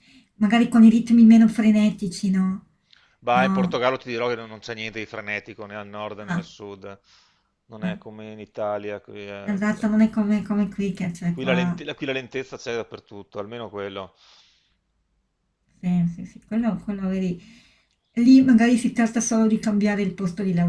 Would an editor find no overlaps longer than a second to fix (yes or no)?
yes